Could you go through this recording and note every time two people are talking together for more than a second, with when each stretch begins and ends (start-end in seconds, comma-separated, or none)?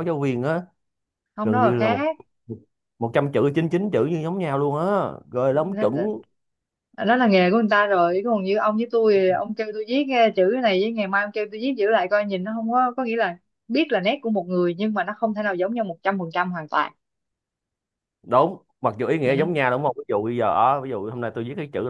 none